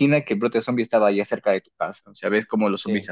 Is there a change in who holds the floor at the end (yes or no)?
no